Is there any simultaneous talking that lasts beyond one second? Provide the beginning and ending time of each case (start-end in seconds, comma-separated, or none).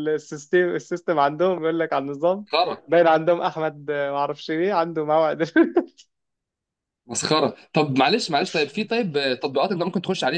none